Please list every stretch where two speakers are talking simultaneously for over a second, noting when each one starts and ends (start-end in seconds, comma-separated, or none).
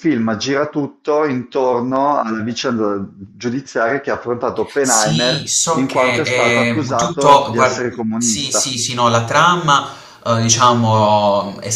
4.8-8.8